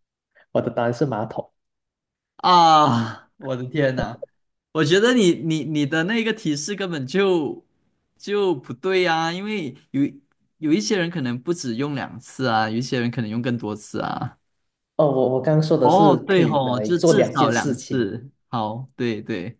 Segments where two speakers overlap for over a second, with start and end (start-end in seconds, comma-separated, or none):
15.8-18.1